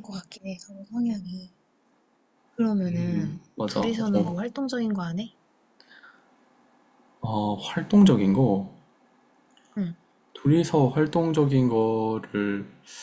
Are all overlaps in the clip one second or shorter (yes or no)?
no